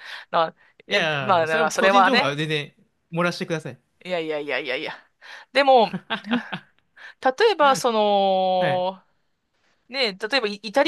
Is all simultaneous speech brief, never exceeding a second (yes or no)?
no